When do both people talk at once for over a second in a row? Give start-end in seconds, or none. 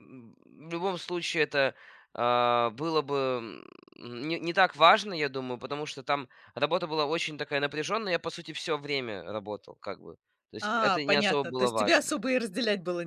10.6-12.1